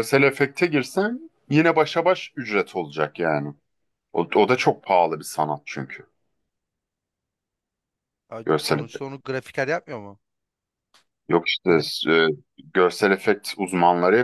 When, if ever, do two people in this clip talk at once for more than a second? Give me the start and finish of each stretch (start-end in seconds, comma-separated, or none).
none